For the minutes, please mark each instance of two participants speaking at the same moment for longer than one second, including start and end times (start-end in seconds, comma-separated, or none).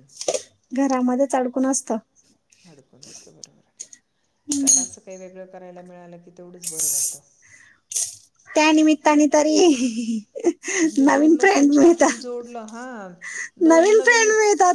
11.1-12.4